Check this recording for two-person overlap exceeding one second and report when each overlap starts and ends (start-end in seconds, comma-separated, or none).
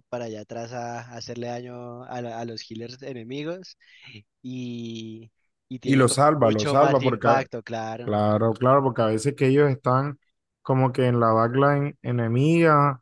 5.8-7.3